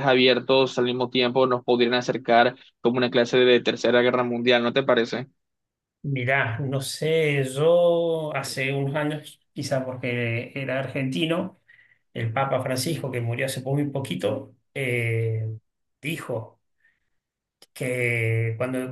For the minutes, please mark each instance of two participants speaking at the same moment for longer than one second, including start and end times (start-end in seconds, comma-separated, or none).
none